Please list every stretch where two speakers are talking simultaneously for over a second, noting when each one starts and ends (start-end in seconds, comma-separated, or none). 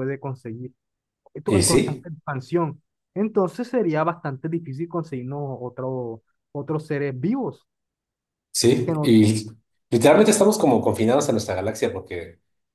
none